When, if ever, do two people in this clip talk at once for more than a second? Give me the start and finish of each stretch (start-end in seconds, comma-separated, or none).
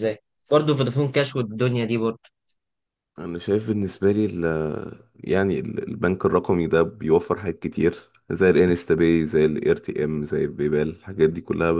none